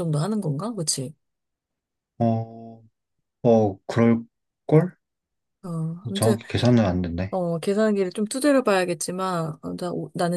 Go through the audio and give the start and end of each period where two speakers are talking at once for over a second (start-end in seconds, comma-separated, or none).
none